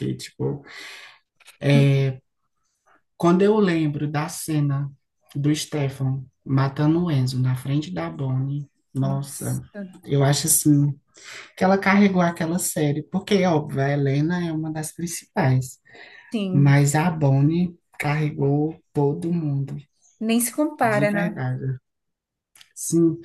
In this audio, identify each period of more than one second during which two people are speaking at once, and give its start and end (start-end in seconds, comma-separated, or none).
none